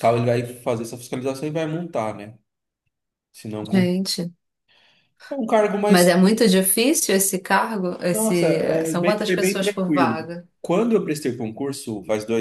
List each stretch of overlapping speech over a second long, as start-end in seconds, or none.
8.1-10.5